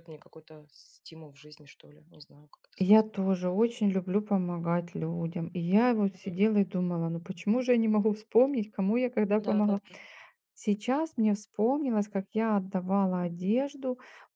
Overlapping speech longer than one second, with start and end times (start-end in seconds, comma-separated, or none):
none